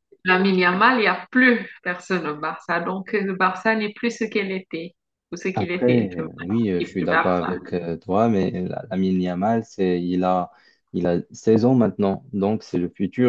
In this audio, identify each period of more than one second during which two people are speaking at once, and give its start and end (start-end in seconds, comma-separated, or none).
5.5-7.5